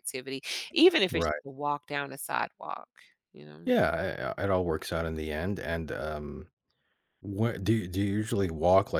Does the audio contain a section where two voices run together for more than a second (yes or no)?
no